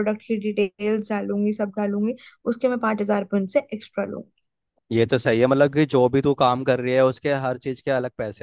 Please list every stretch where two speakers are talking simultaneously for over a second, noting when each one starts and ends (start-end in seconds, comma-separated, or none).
none